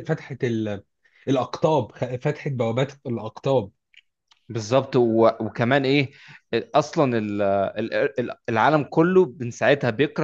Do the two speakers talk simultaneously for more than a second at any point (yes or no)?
no